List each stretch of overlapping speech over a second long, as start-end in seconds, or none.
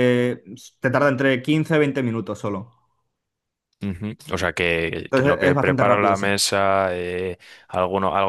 5.0-6.3